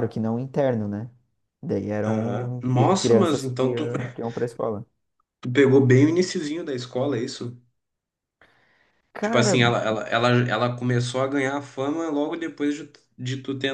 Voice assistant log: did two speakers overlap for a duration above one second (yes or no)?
yes